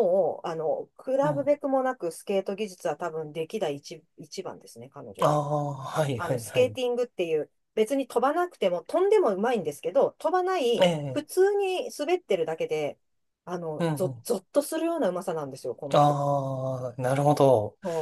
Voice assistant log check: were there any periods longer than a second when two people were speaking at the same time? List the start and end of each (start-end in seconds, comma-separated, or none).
none